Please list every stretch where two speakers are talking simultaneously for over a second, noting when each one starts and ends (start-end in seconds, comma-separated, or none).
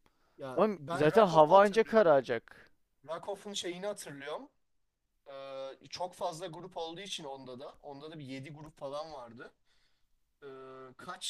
0.6-2.1